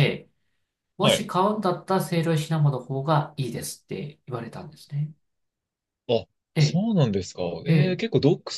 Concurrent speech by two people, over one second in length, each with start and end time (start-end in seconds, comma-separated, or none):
none